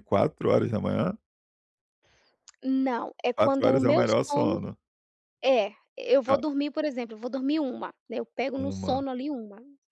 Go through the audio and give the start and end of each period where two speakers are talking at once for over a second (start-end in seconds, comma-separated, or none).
3.4-4.6